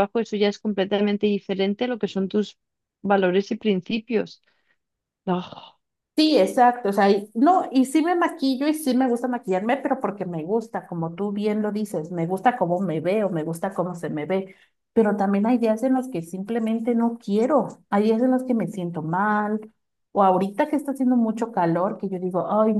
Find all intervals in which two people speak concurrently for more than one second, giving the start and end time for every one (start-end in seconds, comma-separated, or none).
none